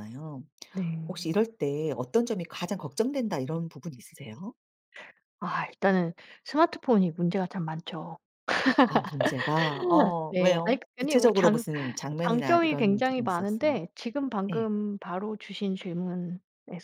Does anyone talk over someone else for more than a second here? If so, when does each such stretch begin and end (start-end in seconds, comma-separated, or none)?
10.3-11.6, 12.3-13.8